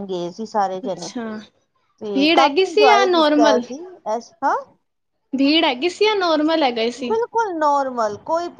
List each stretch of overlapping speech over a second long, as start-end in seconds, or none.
2.1-3.6